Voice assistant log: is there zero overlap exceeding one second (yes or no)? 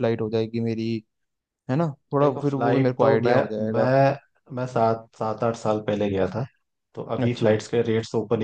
no